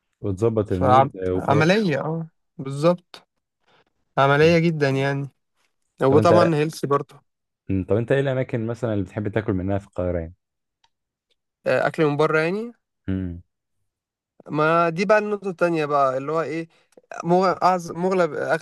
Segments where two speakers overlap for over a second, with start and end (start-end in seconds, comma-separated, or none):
0.7-1.9